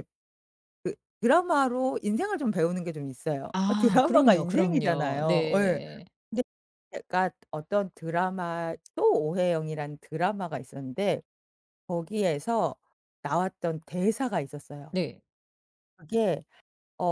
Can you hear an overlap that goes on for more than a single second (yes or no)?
yes